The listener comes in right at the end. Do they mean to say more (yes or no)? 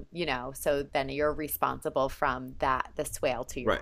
yes